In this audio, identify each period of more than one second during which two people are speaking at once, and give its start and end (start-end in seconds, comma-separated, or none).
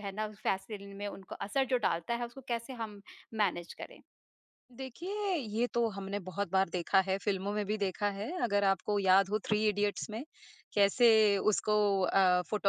none